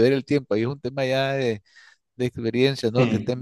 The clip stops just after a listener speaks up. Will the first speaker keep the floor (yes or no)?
yes